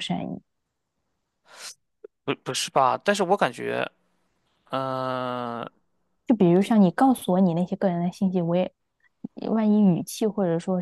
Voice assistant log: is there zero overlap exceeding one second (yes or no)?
yes